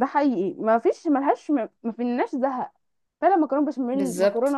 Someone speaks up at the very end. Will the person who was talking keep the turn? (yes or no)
yes